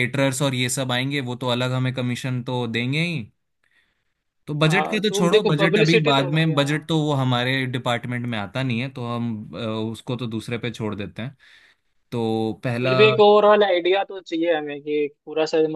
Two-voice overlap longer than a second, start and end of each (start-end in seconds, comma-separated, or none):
4.7-6.8